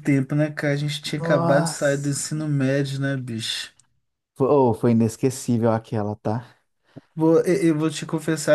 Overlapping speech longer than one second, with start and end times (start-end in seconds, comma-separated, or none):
1.2-2.4